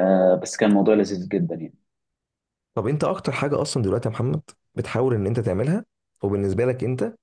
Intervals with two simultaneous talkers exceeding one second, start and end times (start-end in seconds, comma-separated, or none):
none